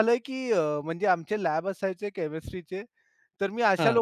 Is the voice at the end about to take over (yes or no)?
no